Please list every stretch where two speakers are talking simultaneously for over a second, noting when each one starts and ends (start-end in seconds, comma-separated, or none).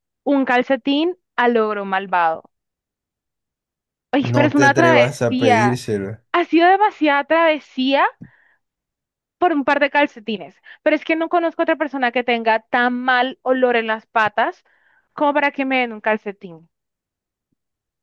4.2-5.8